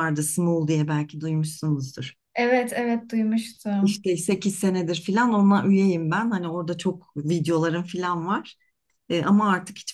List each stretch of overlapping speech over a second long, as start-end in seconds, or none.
none